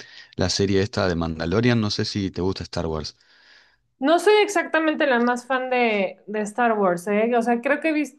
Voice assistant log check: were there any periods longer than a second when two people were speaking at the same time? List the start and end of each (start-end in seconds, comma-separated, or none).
none